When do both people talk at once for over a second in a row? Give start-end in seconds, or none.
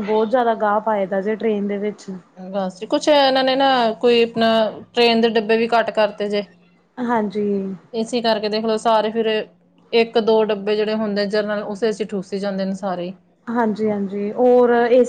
none